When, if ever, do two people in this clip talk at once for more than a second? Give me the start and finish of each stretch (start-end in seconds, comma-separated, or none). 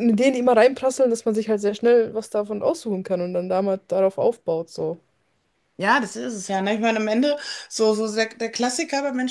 none